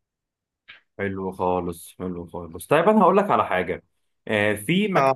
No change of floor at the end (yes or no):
yes